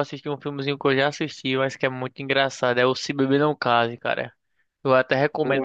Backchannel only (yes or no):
yes